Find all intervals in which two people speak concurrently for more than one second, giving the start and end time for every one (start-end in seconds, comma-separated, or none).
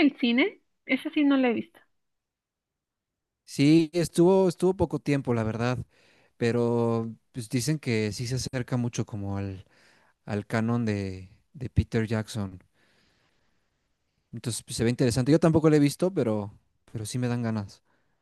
none